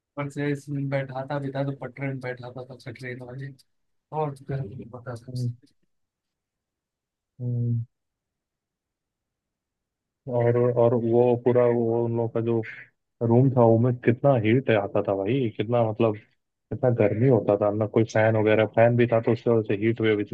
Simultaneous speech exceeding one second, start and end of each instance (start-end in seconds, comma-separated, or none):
none